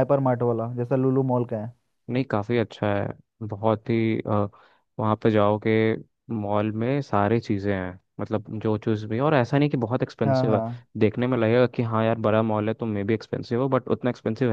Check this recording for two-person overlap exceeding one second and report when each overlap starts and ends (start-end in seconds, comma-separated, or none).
none